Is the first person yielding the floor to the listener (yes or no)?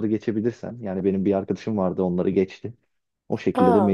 no